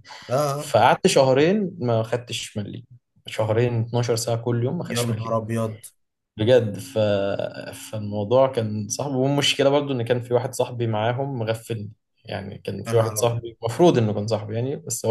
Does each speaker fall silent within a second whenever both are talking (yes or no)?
yes